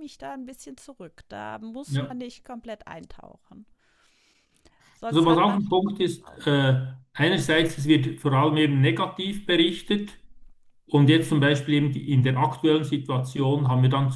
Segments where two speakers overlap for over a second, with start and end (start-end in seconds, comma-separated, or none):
5.1-6.5